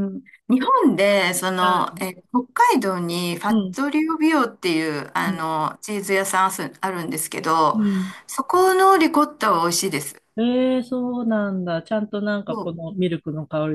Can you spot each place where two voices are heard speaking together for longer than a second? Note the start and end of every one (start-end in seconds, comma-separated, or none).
none